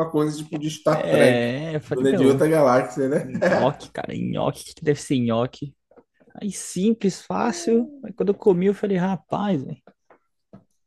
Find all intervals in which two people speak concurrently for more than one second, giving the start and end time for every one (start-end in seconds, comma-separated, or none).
0.9-2.5